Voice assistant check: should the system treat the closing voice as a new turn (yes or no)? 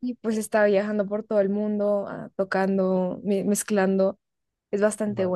no